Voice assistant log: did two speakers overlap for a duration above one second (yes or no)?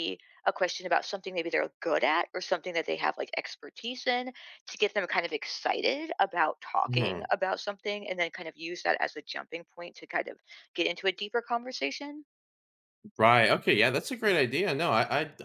no